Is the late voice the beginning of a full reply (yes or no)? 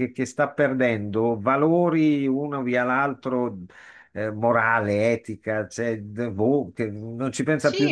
yes